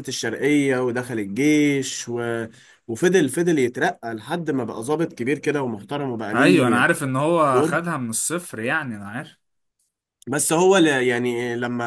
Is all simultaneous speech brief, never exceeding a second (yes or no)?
yes